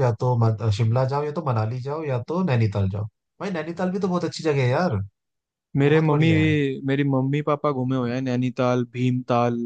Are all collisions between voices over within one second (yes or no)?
yes